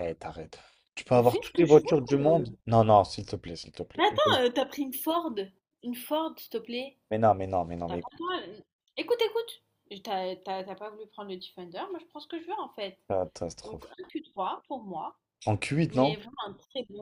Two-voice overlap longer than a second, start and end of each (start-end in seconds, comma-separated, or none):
1.1-2.5